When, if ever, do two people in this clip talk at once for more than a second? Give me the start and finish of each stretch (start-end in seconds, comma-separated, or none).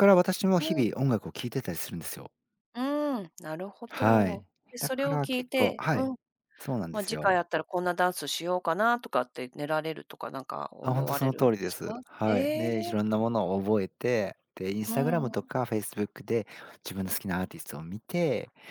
3.9-6.1, 10.8-12.7